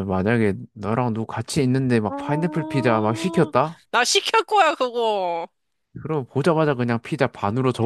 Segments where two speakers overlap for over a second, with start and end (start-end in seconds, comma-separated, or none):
2.1-3.5